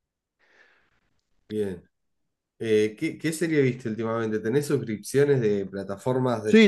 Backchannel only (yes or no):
no